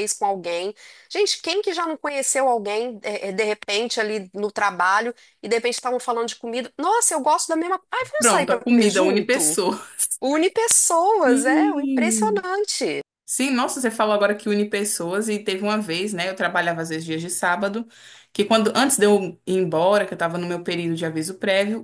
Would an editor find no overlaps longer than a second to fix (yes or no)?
no